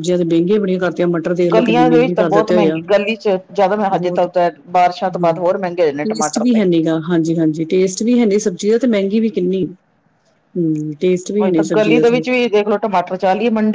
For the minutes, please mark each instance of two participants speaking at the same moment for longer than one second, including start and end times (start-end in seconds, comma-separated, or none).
1.5-2.8